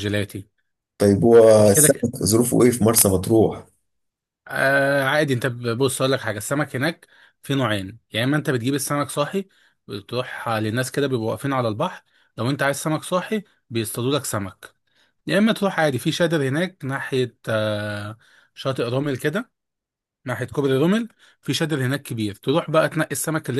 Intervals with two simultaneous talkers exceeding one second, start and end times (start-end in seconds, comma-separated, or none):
none